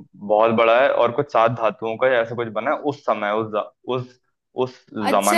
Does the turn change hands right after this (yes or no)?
yes